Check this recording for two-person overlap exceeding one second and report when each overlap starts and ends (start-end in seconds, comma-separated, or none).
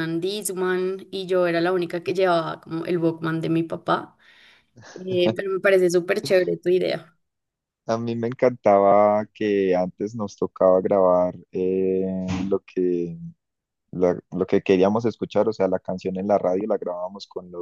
none